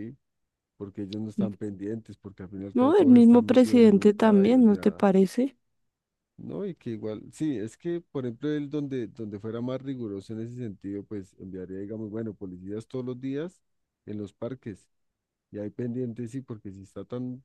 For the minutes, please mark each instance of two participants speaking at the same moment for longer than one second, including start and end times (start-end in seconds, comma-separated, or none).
2.7-5.0